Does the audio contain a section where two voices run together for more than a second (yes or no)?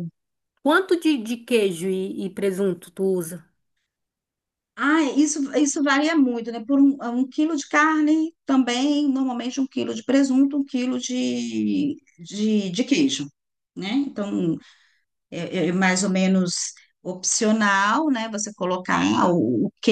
no